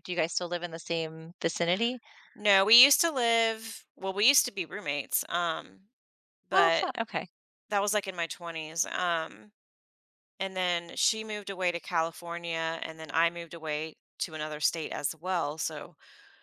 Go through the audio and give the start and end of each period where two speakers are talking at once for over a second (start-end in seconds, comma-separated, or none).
none